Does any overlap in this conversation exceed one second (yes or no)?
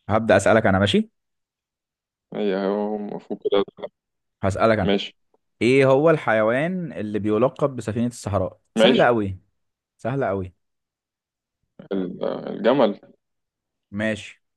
no